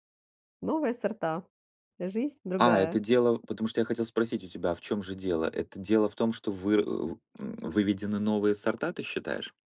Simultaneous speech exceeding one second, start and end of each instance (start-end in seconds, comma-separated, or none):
none